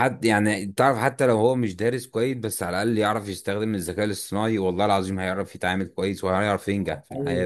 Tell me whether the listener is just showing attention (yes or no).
no